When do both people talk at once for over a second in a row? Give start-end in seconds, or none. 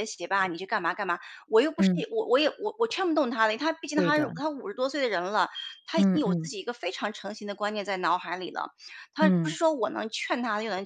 none